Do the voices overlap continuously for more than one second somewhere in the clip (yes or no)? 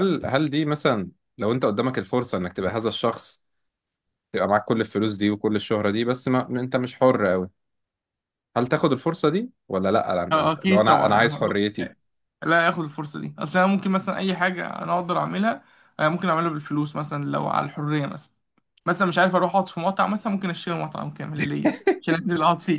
yes